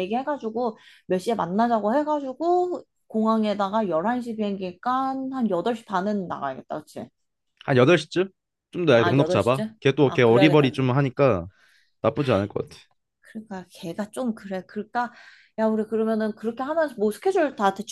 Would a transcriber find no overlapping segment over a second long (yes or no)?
no